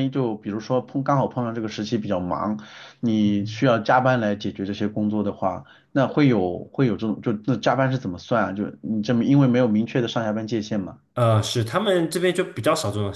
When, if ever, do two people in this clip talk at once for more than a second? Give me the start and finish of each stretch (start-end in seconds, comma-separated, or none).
none